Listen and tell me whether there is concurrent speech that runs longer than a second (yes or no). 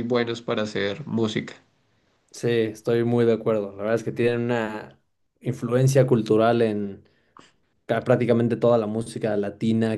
no